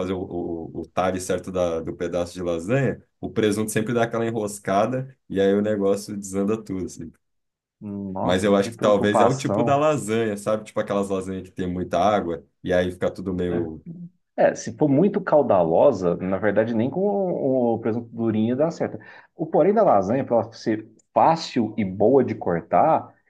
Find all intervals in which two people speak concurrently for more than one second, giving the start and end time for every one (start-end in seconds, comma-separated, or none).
8.2-9.9